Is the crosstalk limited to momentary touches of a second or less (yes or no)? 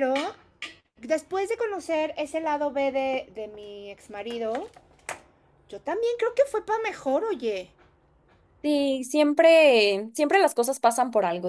yes